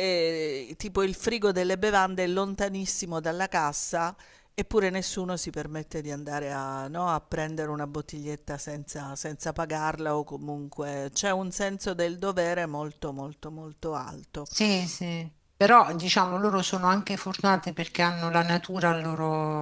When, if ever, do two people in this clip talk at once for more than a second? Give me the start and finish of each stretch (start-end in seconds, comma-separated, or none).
none